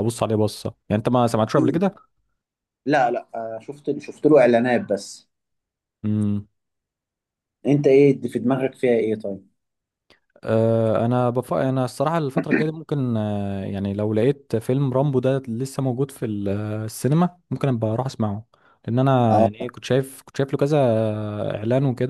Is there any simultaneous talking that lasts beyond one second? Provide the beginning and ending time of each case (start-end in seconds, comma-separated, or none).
none